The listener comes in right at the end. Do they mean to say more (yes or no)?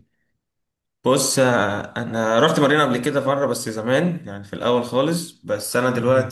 no